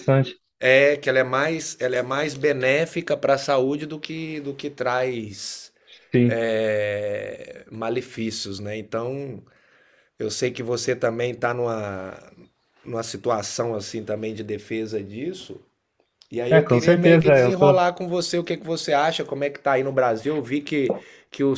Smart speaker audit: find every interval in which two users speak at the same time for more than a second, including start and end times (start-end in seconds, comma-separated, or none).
16.5-17.8